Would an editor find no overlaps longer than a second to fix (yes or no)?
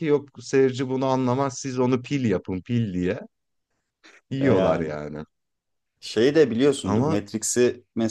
yes